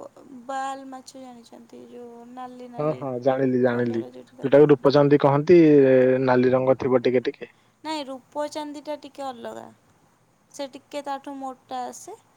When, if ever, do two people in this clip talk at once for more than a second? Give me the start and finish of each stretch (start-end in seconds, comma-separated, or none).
none